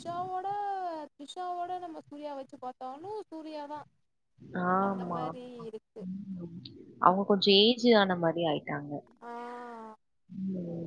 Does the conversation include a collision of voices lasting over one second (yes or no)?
no